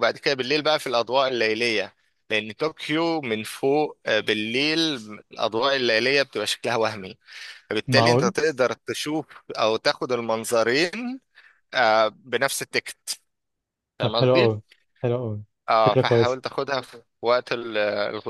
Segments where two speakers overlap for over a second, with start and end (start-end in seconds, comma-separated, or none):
none